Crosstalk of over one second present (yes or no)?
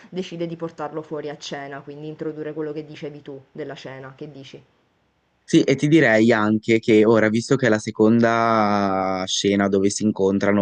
no